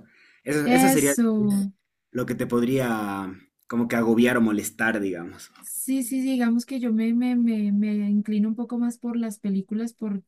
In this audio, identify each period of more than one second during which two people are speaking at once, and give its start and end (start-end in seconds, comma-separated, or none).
none